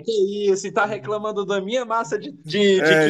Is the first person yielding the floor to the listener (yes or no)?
yes